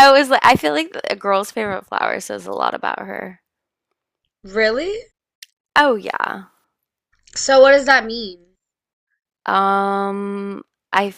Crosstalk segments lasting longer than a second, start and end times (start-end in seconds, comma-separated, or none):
none